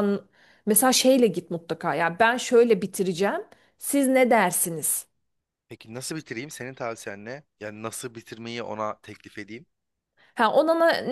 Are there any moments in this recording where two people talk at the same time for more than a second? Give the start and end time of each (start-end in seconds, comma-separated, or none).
none